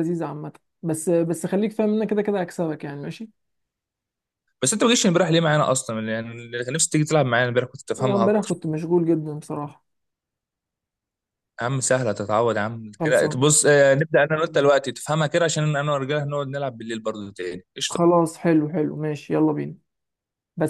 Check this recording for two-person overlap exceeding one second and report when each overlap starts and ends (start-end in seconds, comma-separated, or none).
none